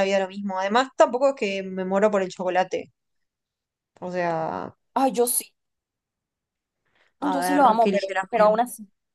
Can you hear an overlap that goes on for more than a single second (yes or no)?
yes